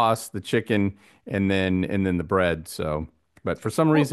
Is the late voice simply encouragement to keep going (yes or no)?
yes